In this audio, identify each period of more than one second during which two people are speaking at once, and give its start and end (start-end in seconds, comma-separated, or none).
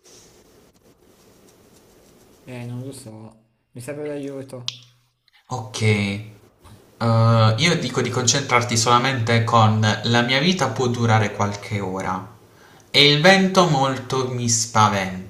none